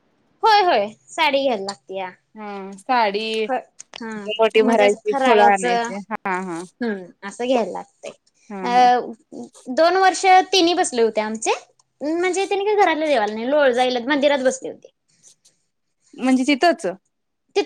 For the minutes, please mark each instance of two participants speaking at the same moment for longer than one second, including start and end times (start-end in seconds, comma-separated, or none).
4.6-6.4